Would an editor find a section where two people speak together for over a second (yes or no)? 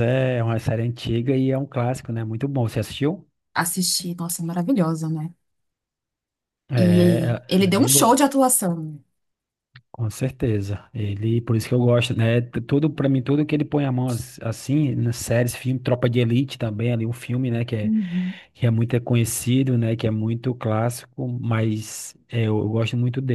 yes